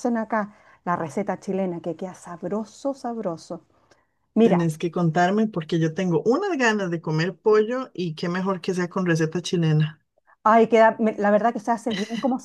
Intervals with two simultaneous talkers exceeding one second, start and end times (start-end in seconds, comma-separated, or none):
none